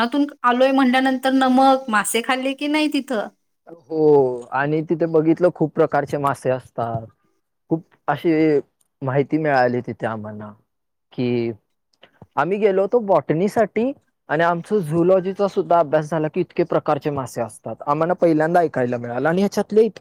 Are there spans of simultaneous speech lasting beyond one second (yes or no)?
no